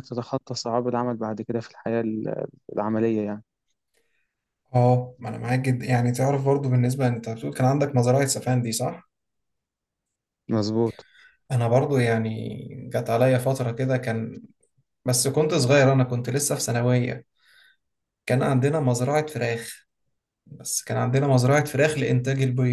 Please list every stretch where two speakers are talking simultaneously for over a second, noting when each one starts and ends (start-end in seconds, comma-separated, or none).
none